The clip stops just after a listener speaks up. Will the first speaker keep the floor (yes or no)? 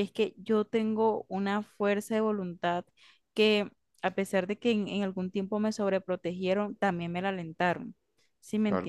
no